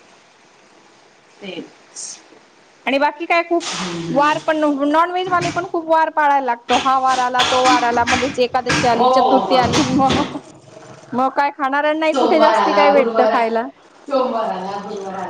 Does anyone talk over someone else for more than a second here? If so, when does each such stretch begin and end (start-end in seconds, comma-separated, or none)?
12.1-13.4